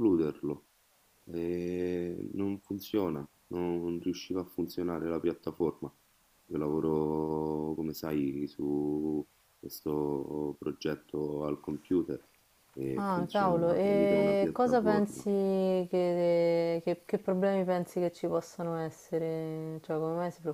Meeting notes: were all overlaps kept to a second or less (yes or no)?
no